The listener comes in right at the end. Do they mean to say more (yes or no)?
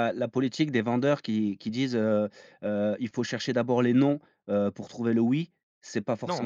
yes